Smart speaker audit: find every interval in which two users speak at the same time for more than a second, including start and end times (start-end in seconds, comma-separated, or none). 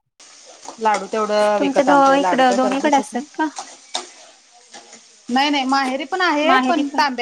1.6-3.2